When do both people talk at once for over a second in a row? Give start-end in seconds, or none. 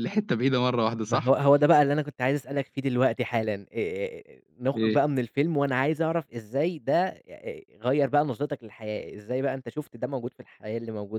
none